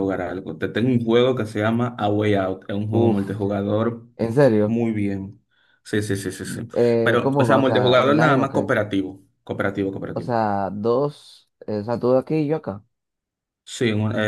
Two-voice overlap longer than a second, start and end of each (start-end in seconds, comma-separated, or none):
6.7-8.7